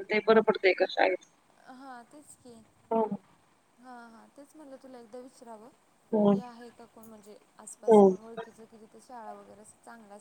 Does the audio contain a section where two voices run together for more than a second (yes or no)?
no